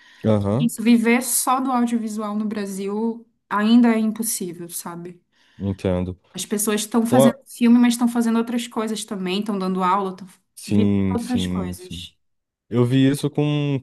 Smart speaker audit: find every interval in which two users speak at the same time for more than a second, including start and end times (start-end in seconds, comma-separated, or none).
10.7-12.1